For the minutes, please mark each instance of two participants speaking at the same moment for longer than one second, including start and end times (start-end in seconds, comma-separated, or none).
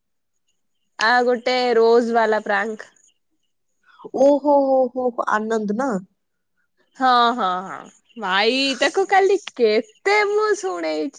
none